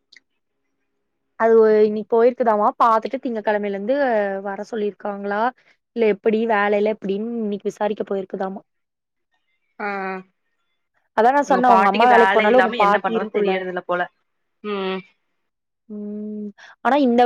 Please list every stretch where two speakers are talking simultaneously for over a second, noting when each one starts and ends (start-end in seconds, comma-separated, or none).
11.4-13.5